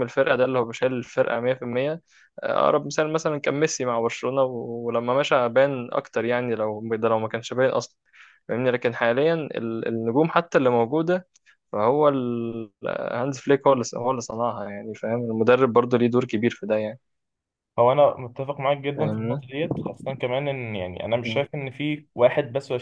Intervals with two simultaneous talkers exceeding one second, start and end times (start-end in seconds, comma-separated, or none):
none